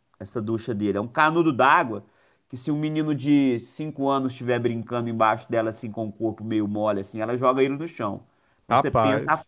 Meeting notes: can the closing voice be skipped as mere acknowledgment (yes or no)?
yes